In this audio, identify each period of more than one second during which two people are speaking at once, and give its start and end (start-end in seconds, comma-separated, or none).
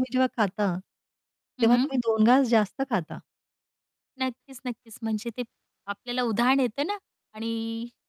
none